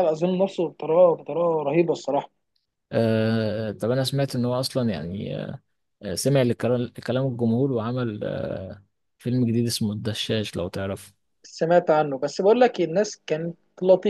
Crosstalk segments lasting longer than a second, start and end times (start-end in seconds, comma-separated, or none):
none